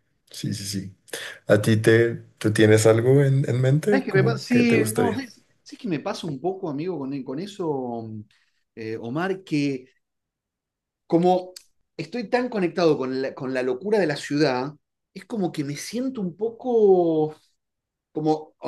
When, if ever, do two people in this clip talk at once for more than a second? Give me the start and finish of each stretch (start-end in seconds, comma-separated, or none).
3.9-5.2